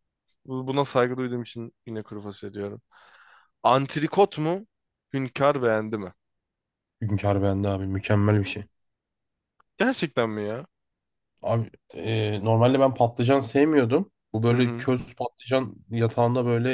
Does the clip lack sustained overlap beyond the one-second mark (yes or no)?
yes